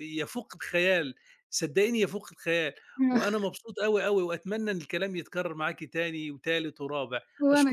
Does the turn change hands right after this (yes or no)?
yes